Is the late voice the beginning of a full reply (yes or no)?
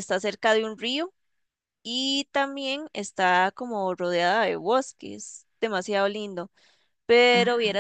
no